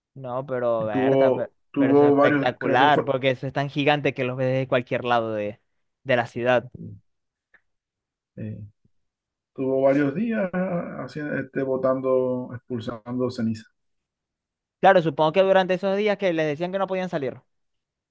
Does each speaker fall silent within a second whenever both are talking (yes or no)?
no